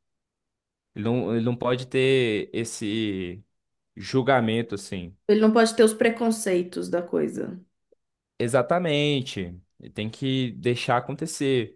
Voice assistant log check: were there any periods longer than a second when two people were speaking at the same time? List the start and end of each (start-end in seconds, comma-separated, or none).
none